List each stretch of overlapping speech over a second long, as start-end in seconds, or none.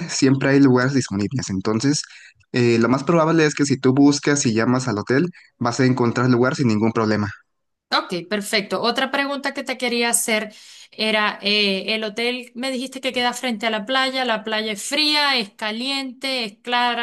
none